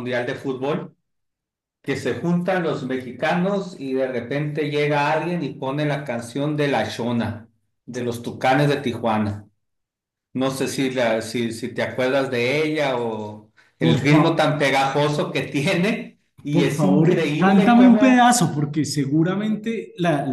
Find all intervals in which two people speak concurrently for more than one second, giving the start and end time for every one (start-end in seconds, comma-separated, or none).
16.5-18.3